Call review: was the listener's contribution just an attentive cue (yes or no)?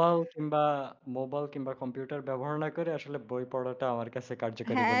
no